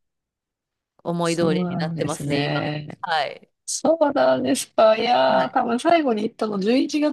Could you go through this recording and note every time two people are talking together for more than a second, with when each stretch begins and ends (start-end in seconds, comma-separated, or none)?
1.2-2.6